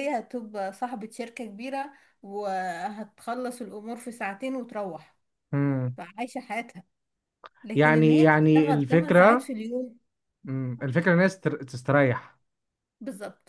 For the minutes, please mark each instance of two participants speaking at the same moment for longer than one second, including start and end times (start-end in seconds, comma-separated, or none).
7.7-9.5